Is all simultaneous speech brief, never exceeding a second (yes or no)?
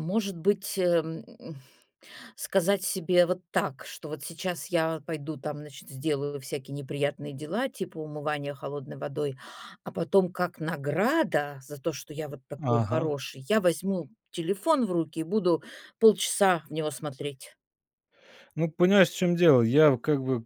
yes